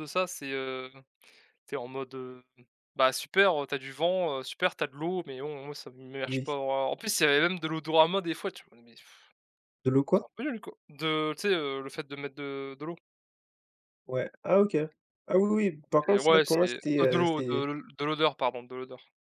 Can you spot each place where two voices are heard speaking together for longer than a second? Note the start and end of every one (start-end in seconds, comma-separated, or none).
16.1-17.7